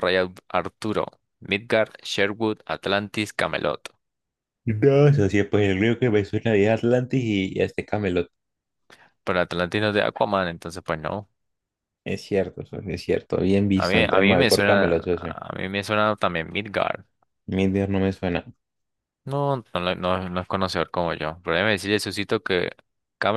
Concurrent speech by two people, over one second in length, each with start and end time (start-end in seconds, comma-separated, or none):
13.8-15.3